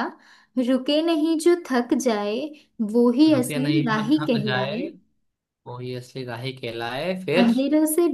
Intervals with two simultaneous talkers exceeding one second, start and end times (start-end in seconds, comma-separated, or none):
3.3-4.8